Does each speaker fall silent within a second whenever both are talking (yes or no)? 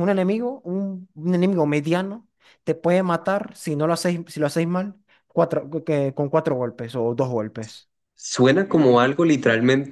yes